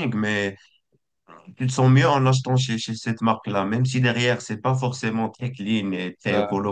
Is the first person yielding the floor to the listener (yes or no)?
no